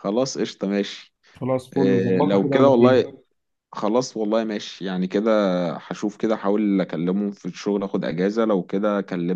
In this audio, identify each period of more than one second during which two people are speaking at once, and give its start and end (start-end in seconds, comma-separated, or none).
1.8-3.0